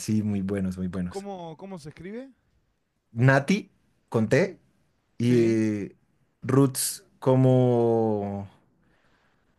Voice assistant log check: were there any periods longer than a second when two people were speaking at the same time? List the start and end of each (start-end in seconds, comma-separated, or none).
none